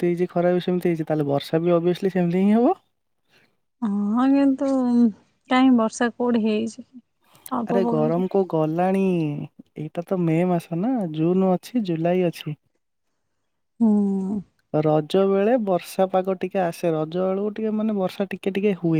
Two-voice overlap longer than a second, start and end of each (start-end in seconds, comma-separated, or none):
none